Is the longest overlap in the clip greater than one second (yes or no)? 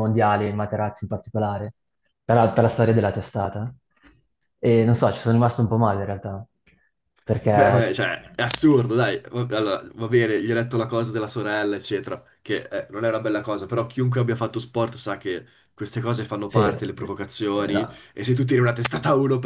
no